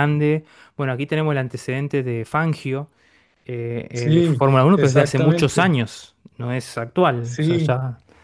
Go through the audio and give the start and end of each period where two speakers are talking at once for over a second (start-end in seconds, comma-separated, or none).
3.9-5.7